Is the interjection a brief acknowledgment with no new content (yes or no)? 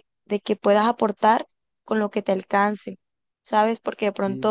yes